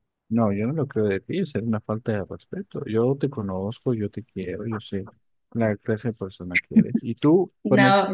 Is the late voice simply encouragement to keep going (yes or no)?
no